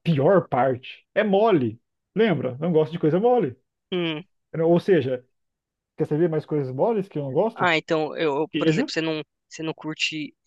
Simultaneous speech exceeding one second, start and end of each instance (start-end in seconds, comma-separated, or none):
none